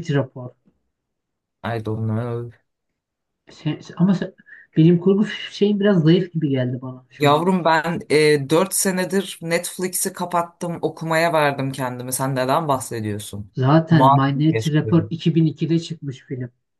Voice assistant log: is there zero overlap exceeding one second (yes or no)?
no